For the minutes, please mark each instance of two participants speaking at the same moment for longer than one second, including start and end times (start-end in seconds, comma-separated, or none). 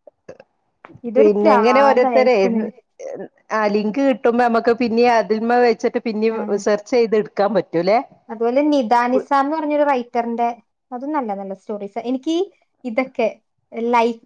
1.2-2.4